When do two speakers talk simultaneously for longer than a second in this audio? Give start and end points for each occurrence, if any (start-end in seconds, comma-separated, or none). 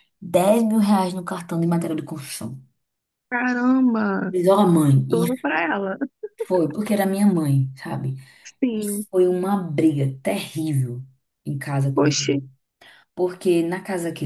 none